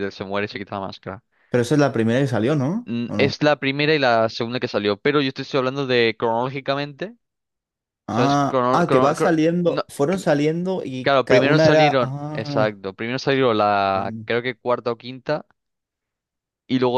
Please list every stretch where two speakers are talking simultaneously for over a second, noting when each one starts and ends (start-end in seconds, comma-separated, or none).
8.1-10.3, 11.0-12.7